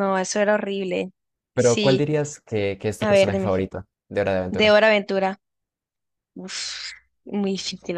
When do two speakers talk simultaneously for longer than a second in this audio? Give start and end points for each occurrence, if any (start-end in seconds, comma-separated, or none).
none